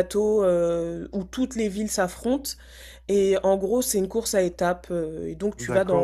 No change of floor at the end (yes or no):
no